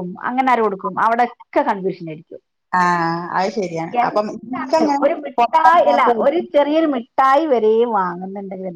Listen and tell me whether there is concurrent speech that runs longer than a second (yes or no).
yes